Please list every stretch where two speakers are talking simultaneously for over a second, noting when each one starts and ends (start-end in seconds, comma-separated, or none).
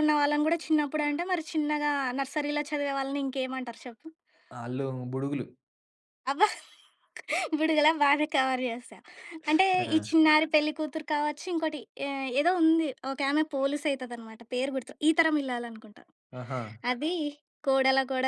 none